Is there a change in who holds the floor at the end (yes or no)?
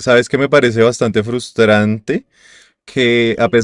no